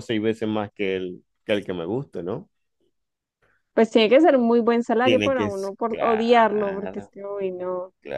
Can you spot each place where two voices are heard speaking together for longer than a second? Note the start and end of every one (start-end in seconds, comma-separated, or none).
5.0-7.1